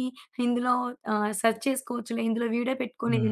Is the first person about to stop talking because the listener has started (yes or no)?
yes